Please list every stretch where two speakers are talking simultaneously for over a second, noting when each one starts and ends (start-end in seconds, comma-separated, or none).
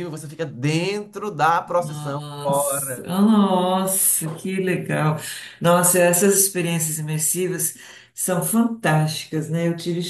1.8-3.1